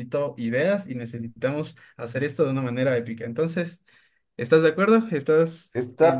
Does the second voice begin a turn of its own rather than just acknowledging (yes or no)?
yes